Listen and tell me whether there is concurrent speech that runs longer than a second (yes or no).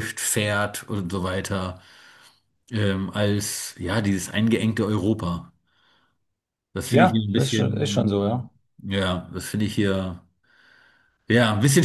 yes